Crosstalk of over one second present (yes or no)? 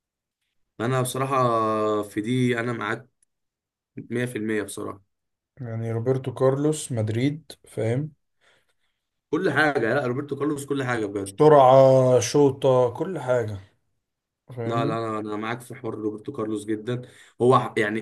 no